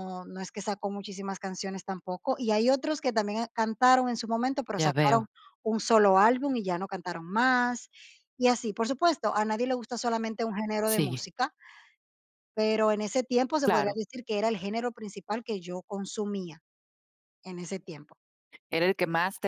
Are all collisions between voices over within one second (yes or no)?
yes